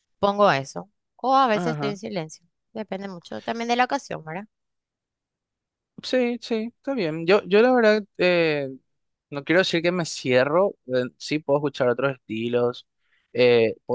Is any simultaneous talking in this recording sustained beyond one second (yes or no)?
no